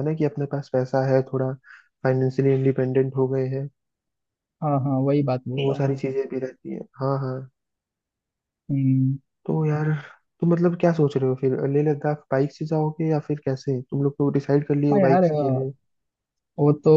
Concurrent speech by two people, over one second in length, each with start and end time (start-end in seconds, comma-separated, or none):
none